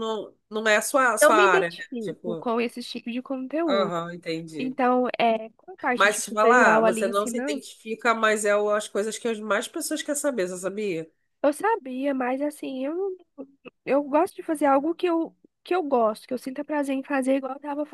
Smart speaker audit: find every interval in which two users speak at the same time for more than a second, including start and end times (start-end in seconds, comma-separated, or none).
1.2-2.5, 5.9-7.6